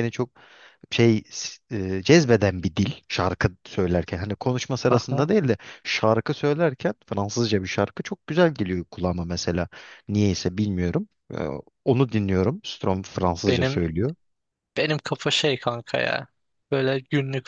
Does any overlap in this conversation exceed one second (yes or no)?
no